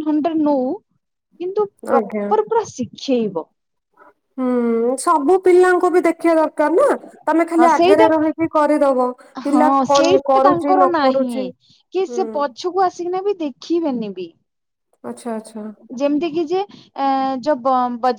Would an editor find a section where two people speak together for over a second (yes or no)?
yes